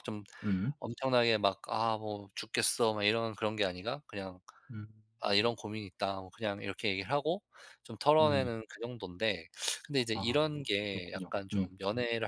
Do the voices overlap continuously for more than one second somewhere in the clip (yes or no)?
yes